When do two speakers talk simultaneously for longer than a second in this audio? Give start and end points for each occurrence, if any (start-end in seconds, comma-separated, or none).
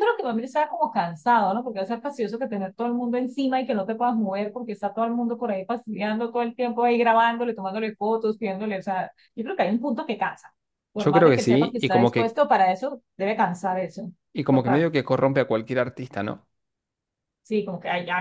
10.9-12.4